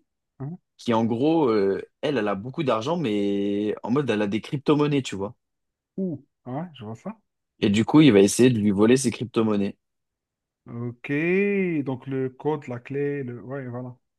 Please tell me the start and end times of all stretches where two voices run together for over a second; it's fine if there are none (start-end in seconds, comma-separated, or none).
none